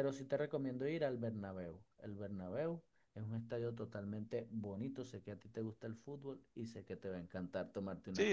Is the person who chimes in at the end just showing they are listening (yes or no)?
no